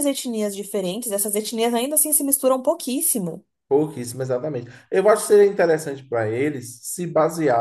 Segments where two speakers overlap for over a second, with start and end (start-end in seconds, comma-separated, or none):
none